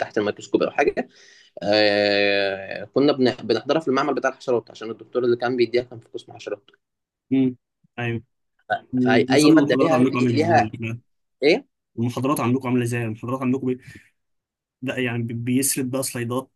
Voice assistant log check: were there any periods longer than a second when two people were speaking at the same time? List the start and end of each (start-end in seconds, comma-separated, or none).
8.9-10.7